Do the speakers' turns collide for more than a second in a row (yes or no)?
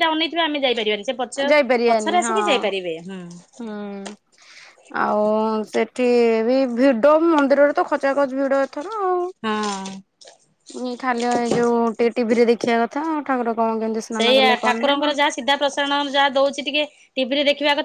no